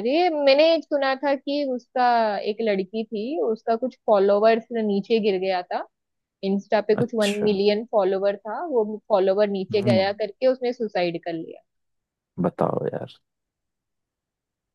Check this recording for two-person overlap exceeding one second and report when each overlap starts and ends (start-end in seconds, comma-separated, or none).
none